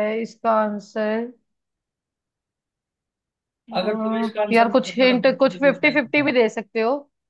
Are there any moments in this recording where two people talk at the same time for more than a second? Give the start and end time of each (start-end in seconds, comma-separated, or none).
3.8-6.3